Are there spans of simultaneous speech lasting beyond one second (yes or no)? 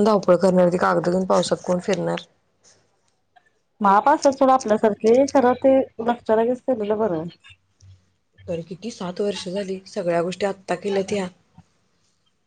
no